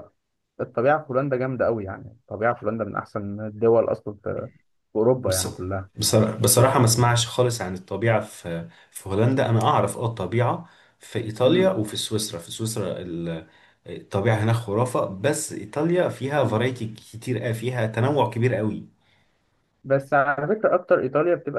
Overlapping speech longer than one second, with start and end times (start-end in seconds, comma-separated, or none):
none